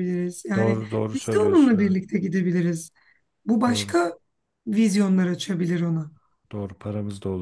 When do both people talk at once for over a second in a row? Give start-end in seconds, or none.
0.6-2.0